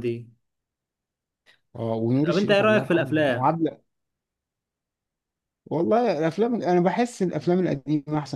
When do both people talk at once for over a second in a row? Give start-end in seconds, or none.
2.3-3.5